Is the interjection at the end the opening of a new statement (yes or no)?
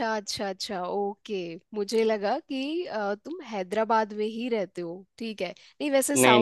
no